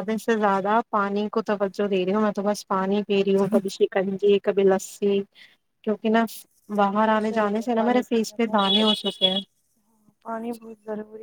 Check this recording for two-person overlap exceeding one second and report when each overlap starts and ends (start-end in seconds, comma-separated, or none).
7.0-8.8